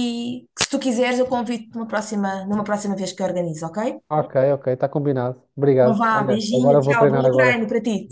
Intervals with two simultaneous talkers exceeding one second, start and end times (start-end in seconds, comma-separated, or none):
5.8-7.6